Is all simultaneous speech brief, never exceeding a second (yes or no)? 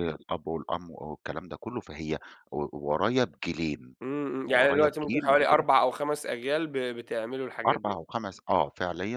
no